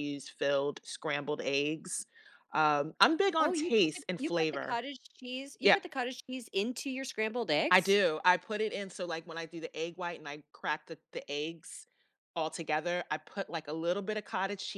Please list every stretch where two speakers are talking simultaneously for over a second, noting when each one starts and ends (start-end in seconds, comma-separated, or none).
3.4-4.8